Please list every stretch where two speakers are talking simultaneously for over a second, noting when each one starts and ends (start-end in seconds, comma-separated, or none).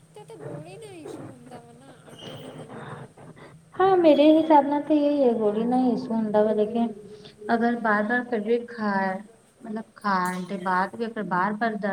none